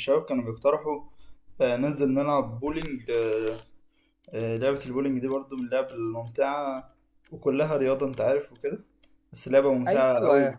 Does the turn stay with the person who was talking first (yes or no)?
yes